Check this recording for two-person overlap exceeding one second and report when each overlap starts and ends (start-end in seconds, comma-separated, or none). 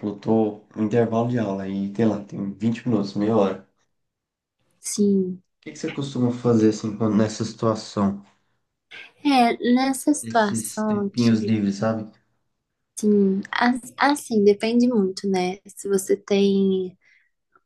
10.2-11.6